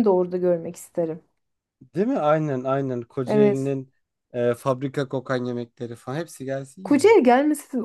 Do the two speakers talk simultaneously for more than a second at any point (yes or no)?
no